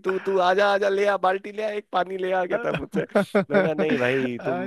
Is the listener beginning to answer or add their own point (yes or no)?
no